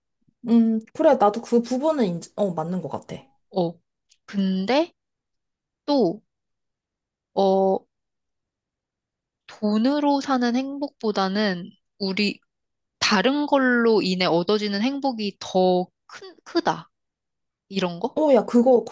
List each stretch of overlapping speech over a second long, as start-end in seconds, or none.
none